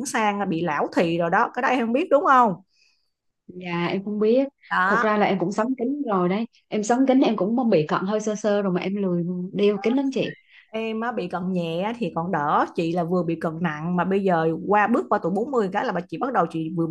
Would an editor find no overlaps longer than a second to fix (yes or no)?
yes